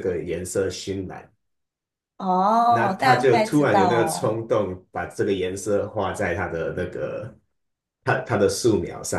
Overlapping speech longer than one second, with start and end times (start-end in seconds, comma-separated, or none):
2.7-4.4